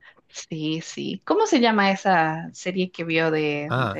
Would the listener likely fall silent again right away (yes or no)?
no